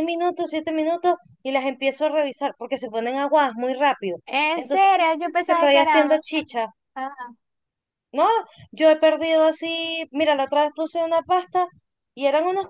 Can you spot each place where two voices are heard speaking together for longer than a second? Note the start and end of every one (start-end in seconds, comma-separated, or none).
4.5-6.2